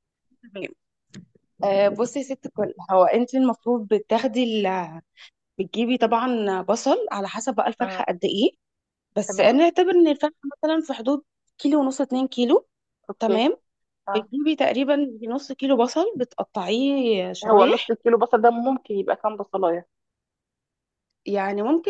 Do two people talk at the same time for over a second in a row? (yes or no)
no